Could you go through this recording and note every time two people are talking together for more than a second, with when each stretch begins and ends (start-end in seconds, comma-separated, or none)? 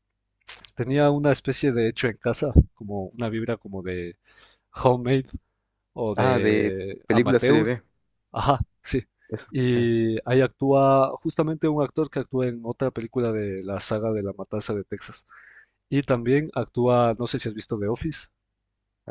6.2-7.7